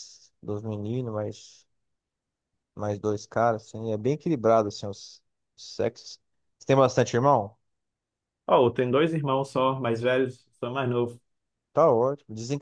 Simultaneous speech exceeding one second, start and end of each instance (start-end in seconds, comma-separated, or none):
none